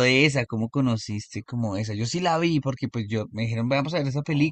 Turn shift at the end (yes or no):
no